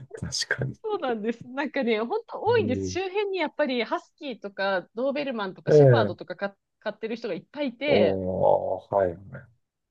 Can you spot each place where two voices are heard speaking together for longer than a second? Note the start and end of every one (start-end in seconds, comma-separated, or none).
none